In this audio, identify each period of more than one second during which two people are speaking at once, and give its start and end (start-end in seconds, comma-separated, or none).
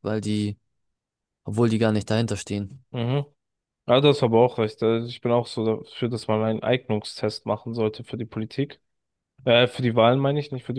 none